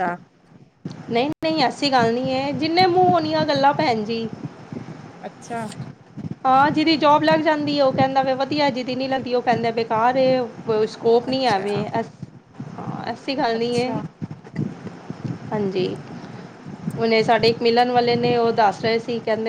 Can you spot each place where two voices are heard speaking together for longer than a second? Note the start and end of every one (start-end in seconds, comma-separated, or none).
none